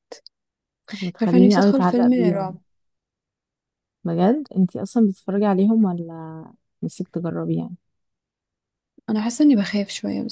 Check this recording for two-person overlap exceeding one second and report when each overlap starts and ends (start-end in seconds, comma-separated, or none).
1.2-2.6